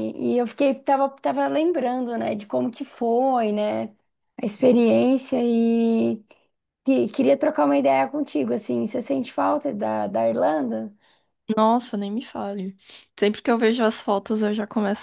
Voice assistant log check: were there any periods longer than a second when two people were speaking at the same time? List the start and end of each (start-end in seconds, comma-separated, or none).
none